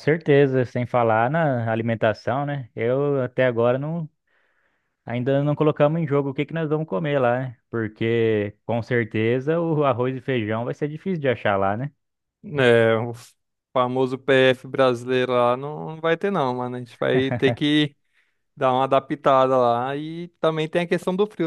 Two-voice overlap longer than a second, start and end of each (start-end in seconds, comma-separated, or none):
none